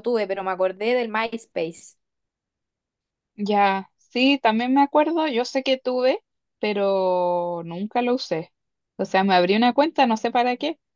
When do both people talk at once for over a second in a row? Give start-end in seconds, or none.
none